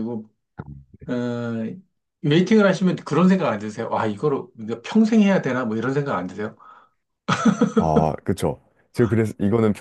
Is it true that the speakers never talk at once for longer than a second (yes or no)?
yes